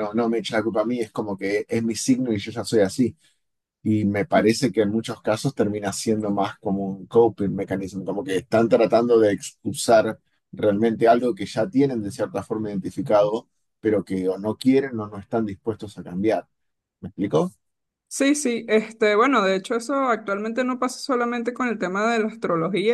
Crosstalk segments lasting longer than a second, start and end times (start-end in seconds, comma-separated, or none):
none